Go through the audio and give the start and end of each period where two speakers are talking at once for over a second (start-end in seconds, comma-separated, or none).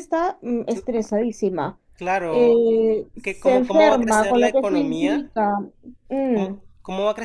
3.2-5.3